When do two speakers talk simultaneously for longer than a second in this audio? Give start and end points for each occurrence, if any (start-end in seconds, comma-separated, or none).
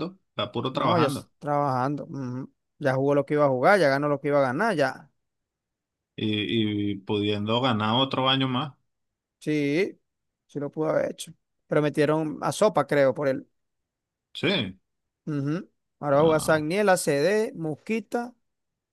none